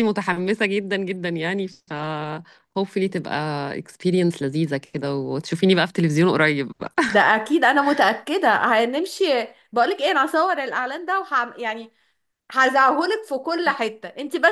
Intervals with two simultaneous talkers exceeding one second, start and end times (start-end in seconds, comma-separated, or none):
none